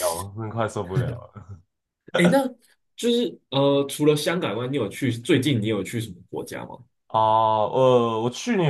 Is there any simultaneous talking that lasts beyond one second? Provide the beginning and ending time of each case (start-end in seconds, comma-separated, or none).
none